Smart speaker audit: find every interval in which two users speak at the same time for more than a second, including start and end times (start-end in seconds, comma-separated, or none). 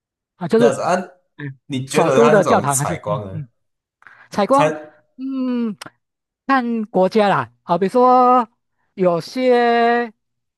1.6-3.4